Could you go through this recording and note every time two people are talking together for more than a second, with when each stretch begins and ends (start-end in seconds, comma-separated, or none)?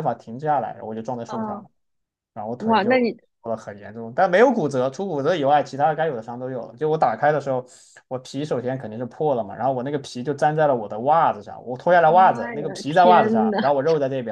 12.0-13.6